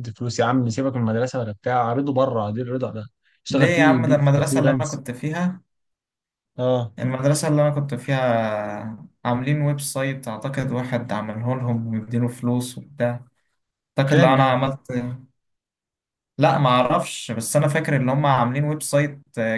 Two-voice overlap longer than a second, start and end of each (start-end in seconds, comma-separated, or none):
3.5-5.0